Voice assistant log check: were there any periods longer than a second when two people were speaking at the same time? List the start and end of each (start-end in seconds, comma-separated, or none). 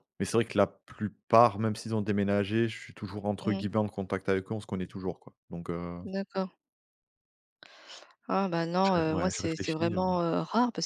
8.8-10.2